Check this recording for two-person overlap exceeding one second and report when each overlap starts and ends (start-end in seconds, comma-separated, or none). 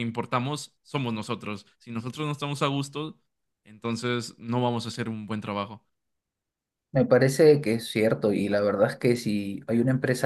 none